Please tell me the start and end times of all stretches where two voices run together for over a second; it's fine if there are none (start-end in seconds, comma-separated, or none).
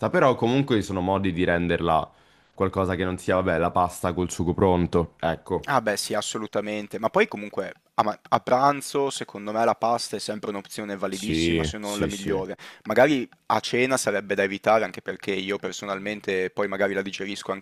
11.1-12.5